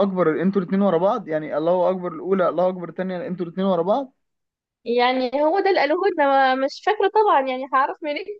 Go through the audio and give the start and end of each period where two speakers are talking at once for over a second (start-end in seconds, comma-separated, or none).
none